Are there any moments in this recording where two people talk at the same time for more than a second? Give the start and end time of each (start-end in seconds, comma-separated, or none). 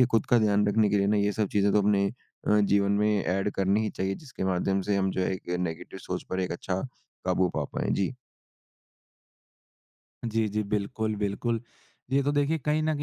none